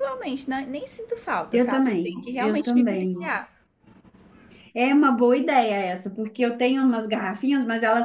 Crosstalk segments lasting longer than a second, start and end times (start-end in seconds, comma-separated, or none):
1.5-3.3